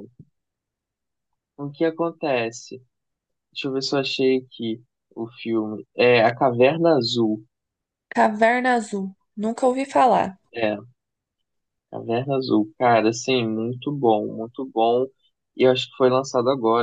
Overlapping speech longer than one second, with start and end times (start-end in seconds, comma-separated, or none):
none